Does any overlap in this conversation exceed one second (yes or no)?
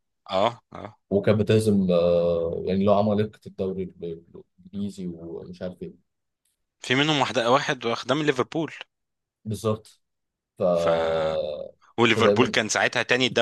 no